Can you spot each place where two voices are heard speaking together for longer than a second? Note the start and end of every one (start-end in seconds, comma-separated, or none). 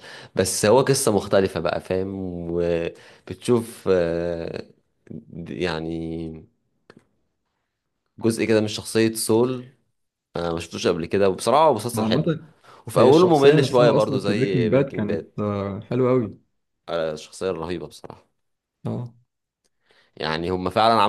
12.9-15.3